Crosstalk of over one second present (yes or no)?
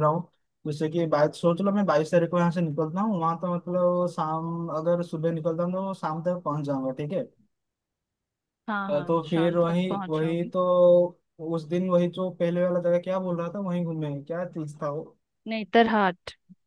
yes